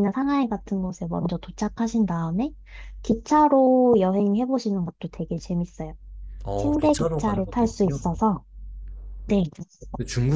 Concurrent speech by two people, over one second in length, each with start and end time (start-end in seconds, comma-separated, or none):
6.6-8.0